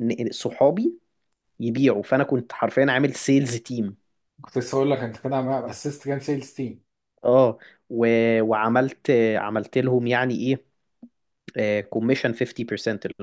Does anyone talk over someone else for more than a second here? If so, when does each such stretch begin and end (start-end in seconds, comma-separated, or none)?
none